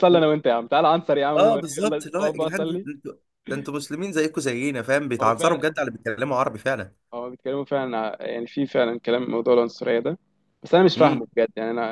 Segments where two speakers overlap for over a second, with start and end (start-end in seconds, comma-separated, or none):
1.4-2.9